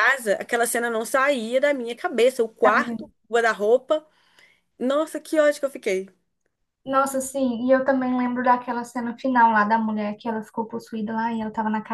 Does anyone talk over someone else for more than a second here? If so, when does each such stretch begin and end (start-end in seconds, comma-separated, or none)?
none